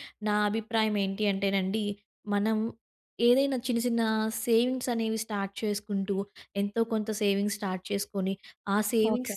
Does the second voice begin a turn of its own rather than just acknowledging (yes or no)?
no